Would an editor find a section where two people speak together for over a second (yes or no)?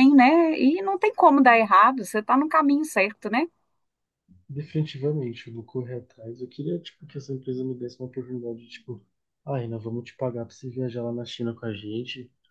no